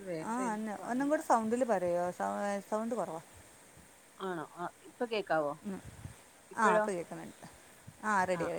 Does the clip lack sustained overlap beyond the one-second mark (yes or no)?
yes